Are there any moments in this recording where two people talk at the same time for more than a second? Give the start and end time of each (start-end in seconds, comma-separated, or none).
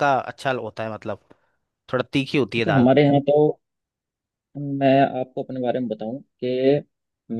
none